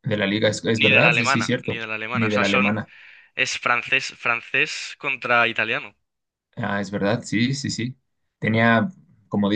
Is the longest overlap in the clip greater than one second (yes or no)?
yes